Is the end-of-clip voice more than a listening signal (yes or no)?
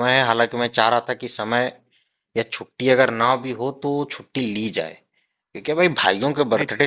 no